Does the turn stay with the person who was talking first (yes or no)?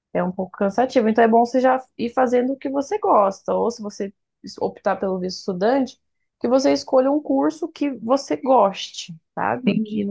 yes